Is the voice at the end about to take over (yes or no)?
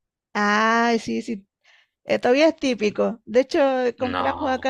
no